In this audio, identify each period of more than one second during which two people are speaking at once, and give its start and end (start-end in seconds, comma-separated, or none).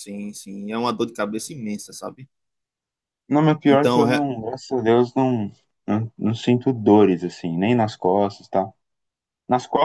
none